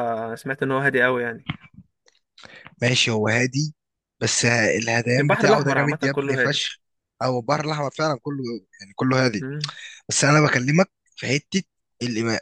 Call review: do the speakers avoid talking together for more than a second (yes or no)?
no